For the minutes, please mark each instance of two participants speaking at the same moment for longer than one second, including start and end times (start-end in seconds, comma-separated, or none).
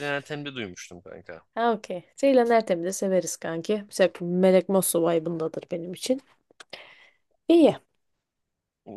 none